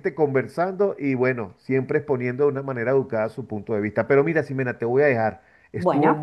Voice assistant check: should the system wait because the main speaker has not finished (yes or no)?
yes